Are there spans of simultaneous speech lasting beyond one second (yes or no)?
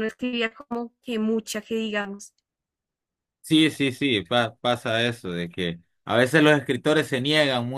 no